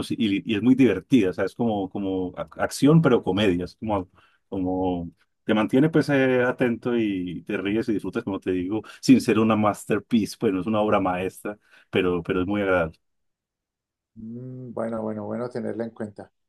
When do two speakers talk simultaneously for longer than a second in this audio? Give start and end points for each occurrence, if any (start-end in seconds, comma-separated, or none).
none